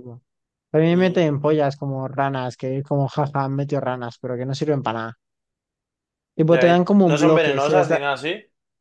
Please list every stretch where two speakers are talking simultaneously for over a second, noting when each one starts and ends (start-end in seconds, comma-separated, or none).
6.5-8.0